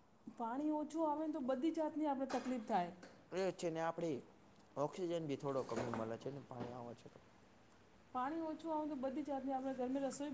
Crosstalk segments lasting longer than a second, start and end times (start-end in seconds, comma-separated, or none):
none